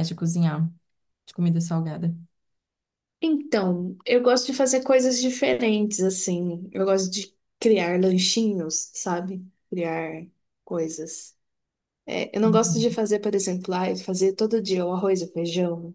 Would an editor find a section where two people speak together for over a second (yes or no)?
no